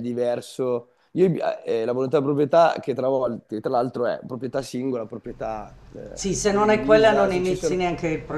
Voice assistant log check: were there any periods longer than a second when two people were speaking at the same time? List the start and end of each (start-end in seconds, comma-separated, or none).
6.1-7.8